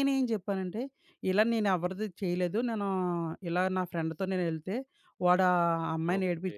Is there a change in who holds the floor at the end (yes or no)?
no